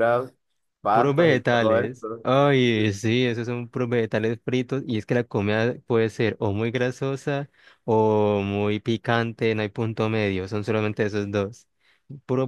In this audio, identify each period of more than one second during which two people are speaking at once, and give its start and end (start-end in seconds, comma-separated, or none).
0.9-2.2